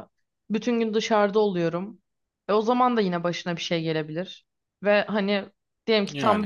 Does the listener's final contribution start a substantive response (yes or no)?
no